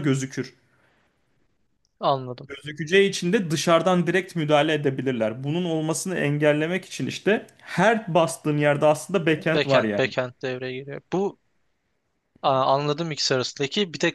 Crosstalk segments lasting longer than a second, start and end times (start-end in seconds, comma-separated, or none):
none